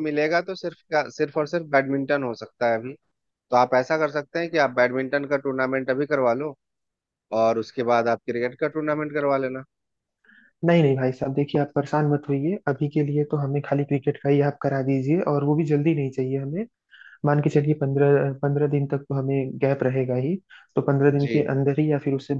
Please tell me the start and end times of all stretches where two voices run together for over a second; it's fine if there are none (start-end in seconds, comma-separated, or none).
none